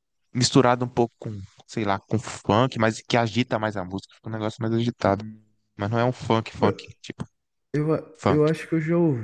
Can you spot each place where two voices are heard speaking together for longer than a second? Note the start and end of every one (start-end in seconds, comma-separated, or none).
none